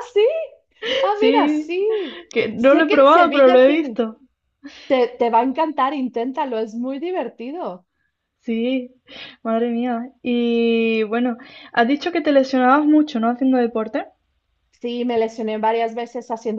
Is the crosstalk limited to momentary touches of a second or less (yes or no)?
no